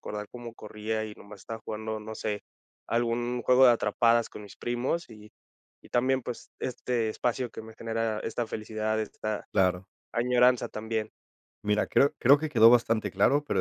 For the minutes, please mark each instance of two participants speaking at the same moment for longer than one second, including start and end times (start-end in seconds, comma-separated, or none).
none